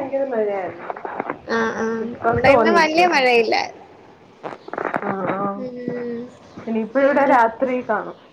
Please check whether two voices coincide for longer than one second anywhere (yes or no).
no